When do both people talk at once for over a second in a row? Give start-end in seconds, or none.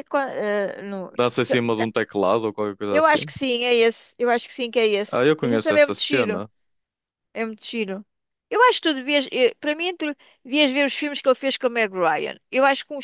5.1-6.4